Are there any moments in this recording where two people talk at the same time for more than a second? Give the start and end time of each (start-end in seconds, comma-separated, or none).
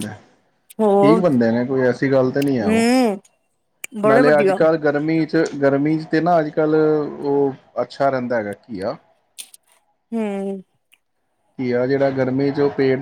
none